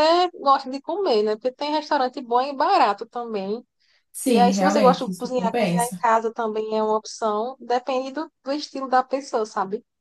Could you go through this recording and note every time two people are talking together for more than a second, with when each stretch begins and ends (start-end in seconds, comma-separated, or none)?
4.2-6.0